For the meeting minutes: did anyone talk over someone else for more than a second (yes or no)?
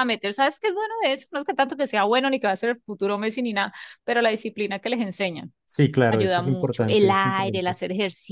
yes